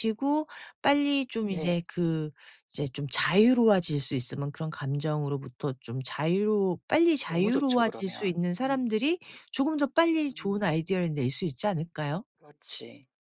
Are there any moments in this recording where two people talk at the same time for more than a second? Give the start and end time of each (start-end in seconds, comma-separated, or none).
7.3-9.0